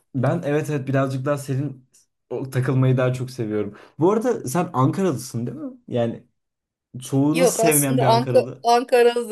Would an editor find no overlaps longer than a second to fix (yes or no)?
no